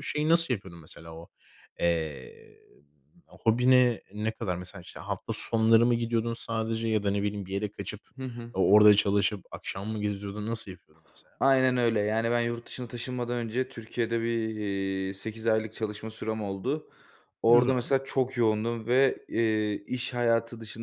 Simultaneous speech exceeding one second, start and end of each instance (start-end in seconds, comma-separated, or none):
none